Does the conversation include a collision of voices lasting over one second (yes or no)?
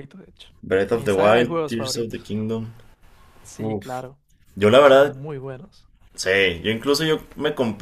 yes